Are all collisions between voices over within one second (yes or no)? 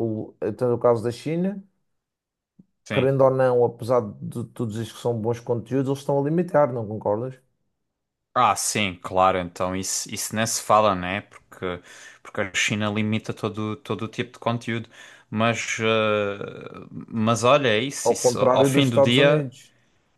no